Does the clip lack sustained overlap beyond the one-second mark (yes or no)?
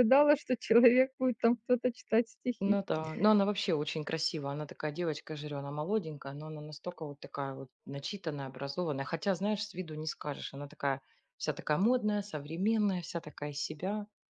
yes